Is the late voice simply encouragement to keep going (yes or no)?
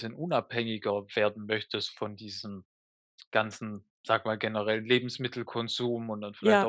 yes